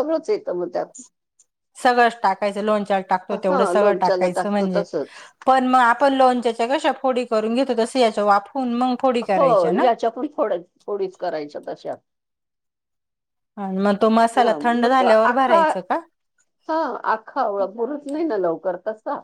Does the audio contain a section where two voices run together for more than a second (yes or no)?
yes